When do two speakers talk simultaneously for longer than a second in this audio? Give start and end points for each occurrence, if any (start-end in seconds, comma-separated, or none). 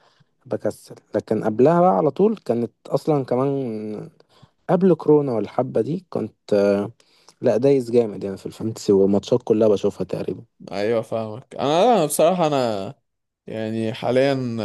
none